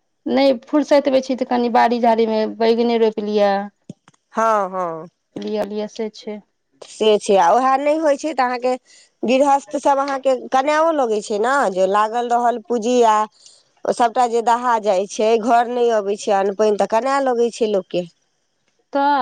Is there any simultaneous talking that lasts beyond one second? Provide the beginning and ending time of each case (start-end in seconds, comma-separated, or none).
none